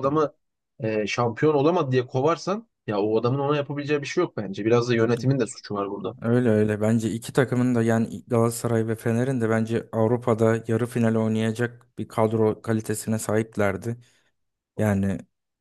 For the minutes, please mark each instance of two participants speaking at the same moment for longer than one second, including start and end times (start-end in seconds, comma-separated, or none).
none